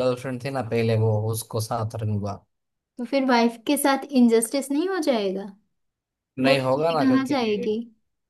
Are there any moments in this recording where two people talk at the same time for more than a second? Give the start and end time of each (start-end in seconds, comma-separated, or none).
6.5-7.7